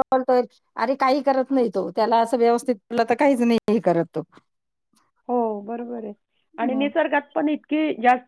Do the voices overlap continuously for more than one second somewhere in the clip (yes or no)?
no